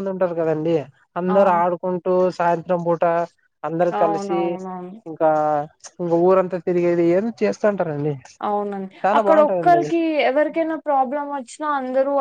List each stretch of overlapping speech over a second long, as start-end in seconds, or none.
none